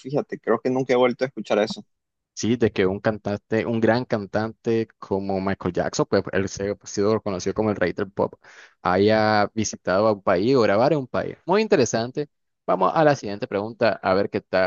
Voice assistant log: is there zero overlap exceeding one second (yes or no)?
yes